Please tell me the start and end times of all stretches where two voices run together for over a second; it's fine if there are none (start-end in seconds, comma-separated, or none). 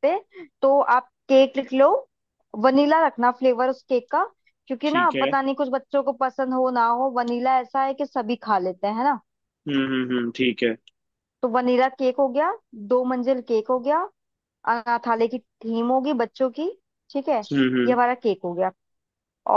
none